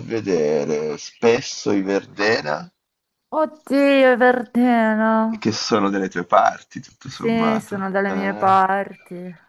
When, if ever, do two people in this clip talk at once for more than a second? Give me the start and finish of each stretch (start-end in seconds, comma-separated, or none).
7.0-8.6